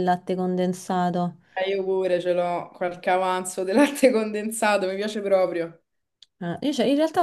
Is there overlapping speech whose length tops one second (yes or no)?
no